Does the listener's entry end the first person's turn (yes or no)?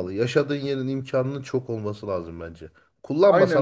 yes